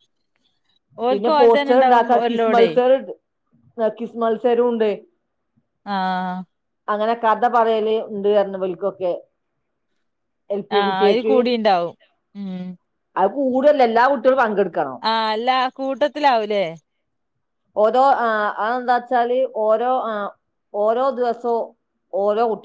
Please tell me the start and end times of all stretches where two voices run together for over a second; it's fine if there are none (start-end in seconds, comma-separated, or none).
1.1-2.7